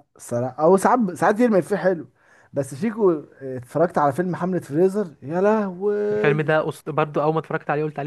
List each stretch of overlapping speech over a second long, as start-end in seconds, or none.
none